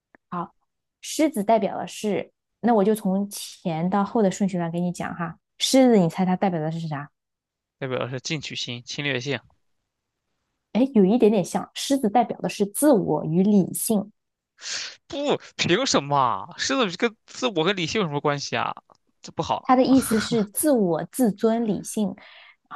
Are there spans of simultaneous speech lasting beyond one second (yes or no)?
no